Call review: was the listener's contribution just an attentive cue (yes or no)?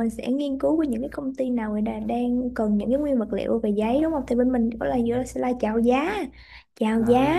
yes